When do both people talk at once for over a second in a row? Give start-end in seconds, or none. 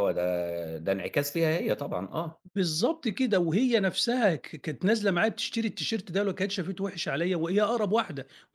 none